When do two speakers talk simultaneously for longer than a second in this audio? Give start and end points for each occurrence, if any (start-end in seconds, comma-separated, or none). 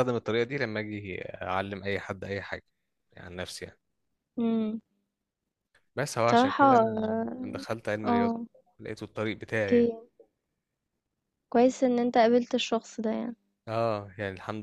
none